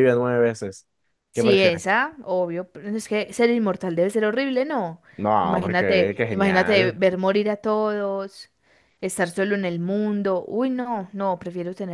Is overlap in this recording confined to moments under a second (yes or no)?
no